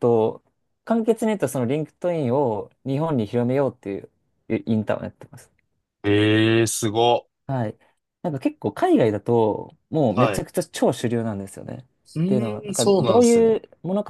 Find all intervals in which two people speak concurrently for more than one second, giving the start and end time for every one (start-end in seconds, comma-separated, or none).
12.2-13.6